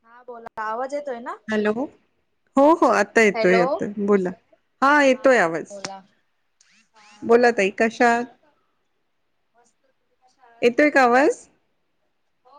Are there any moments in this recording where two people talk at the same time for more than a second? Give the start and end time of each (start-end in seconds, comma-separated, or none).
none